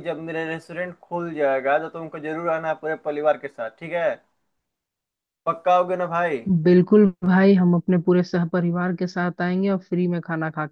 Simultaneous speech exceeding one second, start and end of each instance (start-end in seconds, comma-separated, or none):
none